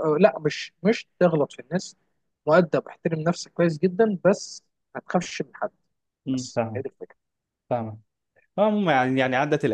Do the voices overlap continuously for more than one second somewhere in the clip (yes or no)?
no